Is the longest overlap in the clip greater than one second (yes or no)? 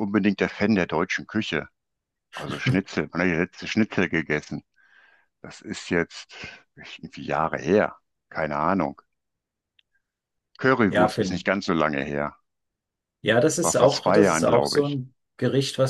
yes